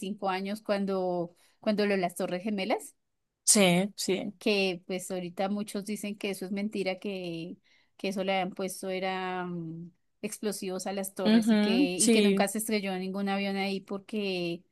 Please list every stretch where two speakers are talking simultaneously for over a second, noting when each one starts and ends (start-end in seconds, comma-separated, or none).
11.2-12.5